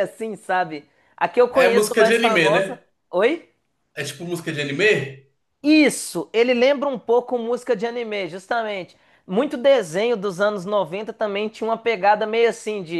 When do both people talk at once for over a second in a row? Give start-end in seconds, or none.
1.5-2.8